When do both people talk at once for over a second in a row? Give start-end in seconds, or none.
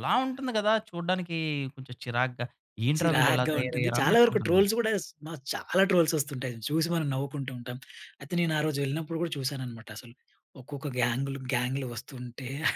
3.0-4.6